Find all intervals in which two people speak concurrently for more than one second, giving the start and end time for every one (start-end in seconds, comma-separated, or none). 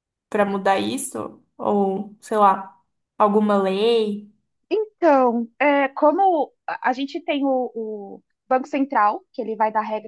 none